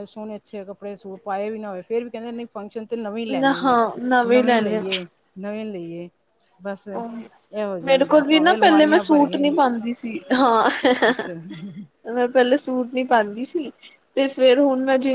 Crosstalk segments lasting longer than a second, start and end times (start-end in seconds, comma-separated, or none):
7.8-9.6